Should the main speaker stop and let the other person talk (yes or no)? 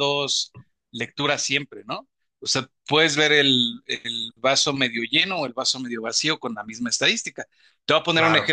no